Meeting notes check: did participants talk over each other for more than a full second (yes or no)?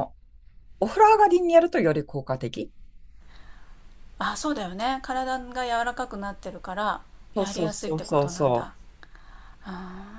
yes